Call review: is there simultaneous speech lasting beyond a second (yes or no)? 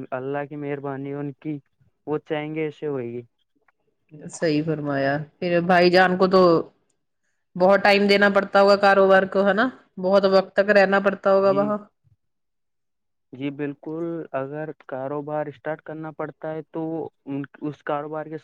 no